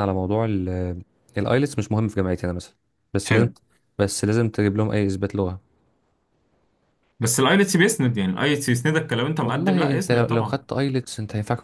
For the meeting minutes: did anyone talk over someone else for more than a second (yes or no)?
yes